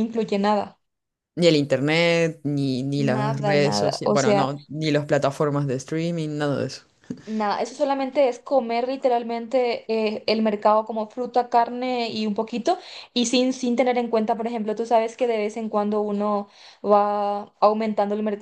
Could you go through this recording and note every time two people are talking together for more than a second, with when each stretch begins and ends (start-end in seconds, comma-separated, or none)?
3.0-4.5